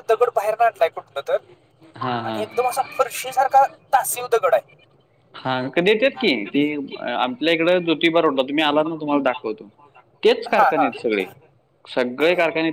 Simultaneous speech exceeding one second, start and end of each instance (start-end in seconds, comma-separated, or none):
none